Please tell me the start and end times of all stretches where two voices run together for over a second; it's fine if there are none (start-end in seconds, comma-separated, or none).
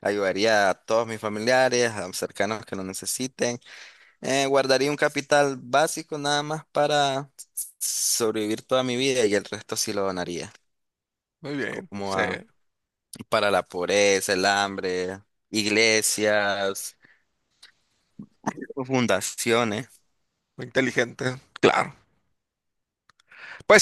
none